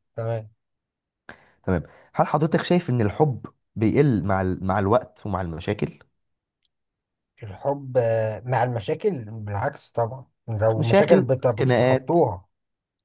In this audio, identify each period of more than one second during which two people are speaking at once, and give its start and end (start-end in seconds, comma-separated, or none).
10.8-12.2